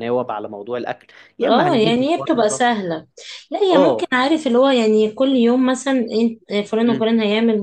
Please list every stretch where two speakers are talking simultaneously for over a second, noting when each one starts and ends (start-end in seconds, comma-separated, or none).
1.4-2.6